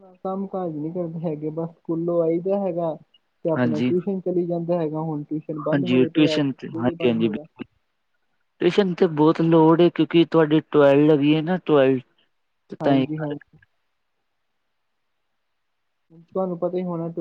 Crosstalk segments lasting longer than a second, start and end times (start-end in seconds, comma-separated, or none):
5.7-7.5